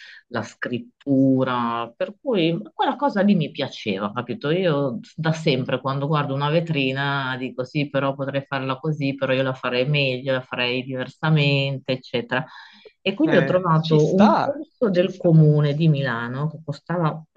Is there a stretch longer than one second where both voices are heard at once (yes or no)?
yes